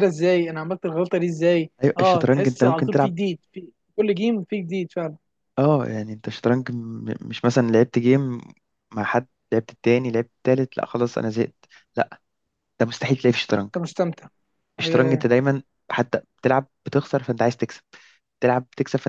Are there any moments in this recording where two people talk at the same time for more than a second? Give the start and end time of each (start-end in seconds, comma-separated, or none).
1.8-3.1